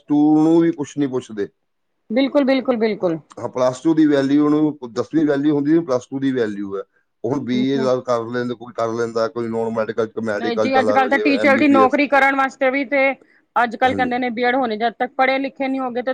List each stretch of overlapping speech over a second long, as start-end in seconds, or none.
10.4-12.0